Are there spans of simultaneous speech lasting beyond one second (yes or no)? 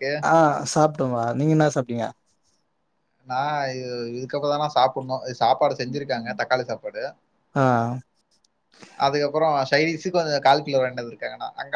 no